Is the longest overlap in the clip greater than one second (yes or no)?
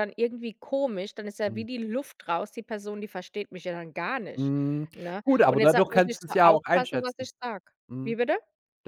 yes